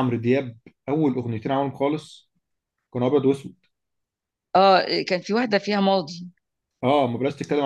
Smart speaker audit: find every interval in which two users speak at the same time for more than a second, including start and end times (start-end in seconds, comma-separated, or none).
none